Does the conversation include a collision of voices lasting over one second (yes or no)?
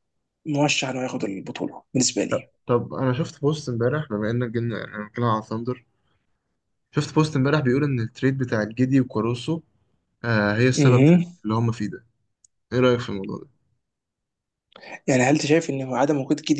no